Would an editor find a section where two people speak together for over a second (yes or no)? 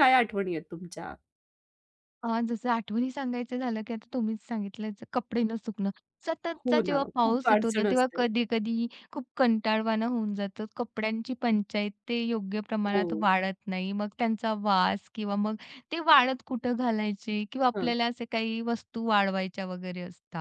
yes